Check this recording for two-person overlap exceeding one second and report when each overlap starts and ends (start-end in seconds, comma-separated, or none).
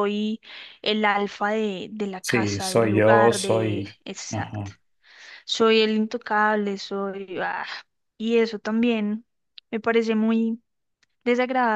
2.2-4.7